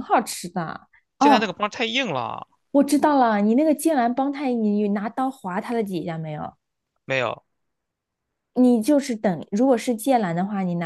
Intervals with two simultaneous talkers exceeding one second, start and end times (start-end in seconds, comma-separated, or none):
none